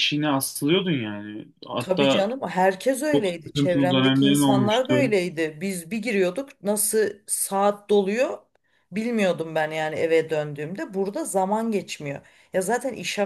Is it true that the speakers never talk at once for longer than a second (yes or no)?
no